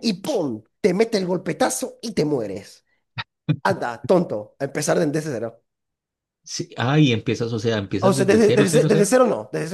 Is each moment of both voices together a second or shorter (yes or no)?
no